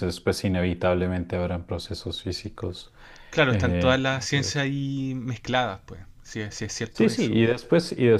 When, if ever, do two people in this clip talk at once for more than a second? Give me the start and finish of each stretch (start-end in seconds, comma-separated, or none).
none